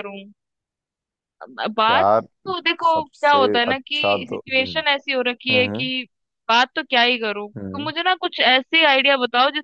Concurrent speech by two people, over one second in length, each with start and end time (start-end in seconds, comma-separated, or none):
2.8-4.8